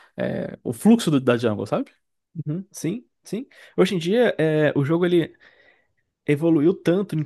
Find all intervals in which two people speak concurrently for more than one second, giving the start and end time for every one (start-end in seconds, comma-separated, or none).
none